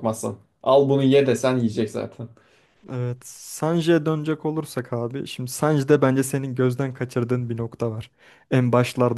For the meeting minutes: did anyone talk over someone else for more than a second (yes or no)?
no